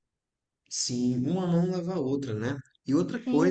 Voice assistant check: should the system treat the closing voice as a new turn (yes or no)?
no